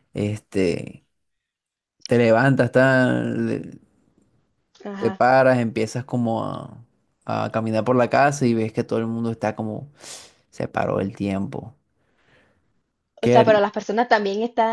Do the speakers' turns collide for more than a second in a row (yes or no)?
no